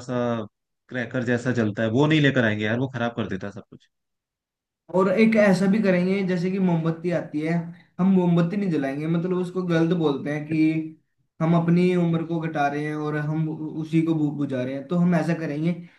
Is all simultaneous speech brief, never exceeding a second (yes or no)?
yes